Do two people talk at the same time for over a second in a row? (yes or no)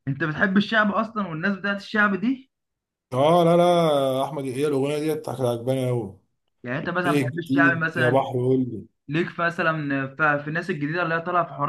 yes